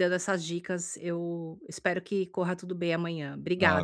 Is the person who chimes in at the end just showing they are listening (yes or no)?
no